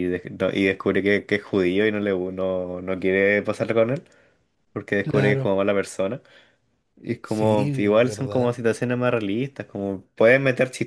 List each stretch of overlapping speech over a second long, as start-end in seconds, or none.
7.2-8.5